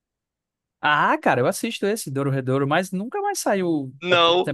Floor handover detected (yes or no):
yes